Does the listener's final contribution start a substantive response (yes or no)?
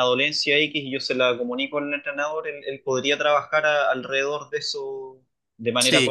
yes